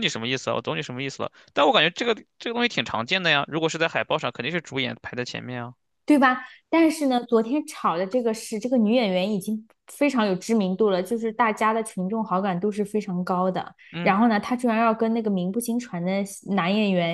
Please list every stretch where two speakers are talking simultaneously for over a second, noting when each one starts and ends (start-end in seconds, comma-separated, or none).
none